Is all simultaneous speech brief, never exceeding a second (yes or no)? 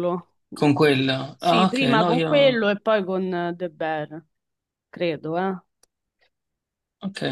no